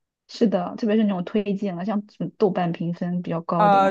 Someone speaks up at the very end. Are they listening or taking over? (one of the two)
taking over